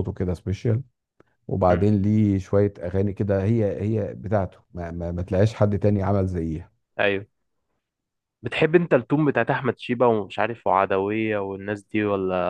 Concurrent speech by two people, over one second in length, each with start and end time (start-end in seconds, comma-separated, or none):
none